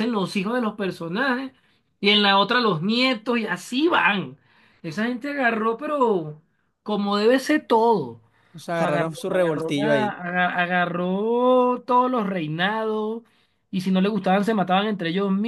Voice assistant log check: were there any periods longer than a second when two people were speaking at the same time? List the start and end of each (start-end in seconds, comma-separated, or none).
8.7-10.2